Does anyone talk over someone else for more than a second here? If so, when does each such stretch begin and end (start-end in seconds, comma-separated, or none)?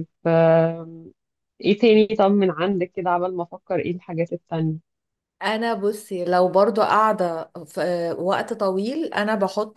none